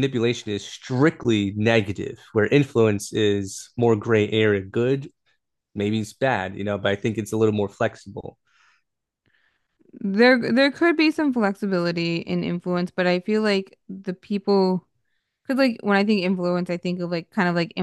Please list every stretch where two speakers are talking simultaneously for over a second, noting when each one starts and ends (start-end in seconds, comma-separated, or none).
none